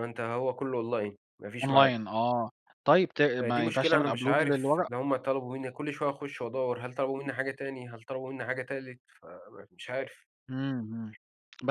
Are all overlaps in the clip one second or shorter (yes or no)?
no